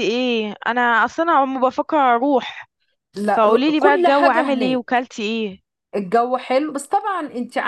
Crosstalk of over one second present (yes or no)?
yes